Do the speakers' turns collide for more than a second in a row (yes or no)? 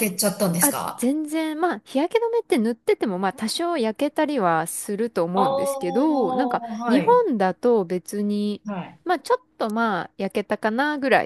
yes